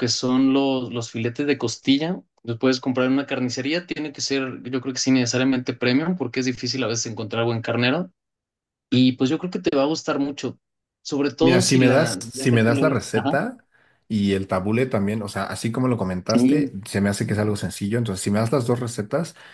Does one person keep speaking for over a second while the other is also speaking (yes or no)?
yes